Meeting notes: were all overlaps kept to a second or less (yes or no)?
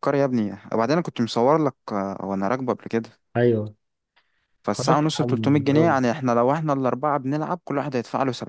no